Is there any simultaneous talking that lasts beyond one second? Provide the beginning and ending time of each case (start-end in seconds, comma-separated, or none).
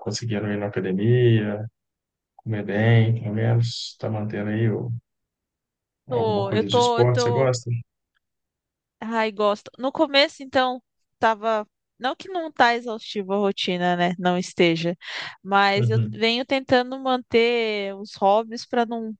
6.1-7.5